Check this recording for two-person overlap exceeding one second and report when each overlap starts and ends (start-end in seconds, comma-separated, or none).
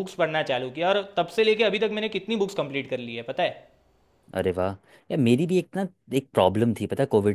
none